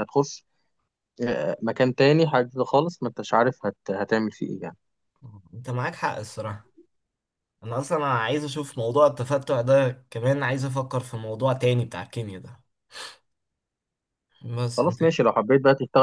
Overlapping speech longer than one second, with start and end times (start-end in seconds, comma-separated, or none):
none